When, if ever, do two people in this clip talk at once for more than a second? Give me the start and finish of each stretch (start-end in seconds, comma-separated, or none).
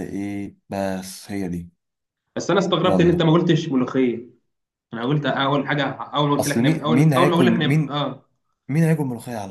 6.4-8.0